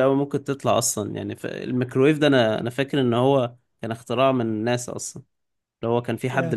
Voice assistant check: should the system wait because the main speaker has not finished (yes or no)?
yes